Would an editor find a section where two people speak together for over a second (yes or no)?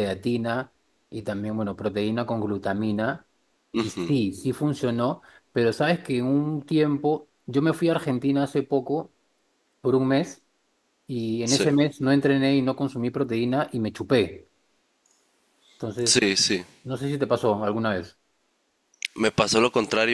no